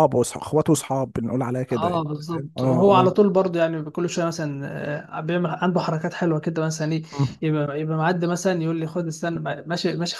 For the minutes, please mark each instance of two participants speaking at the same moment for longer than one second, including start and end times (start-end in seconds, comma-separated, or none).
1.7-3.1